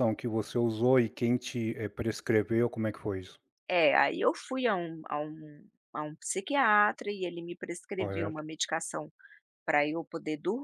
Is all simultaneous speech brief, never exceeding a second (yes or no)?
yes